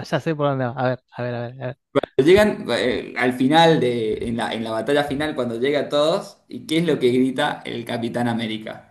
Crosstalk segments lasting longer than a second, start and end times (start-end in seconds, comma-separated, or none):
none